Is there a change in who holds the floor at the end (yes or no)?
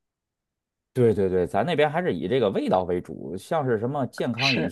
no